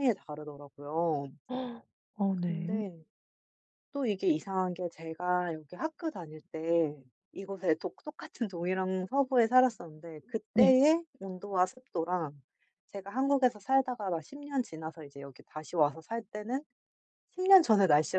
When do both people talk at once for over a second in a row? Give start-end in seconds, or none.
none